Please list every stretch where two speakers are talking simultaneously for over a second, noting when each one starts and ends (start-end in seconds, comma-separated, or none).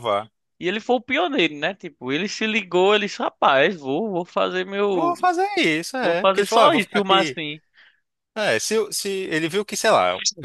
6.0-7.4